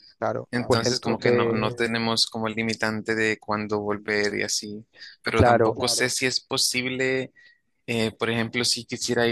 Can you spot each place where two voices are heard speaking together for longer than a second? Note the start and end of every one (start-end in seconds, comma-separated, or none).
0.5-1.8